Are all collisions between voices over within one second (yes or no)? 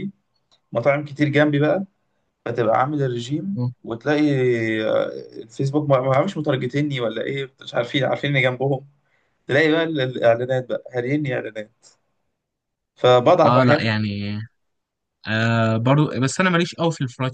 yes